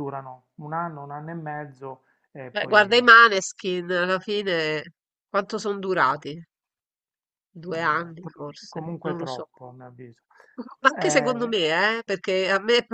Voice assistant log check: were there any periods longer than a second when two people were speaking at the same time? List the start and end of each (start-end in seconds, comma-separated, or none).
7.7-9.5